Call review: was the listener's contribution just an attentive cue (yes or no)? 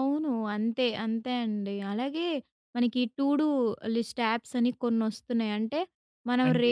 yes